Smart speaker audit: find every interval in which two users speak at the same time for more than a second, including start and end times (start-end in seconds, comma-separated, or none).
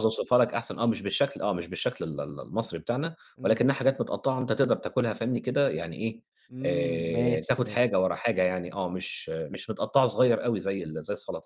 6.7-7.9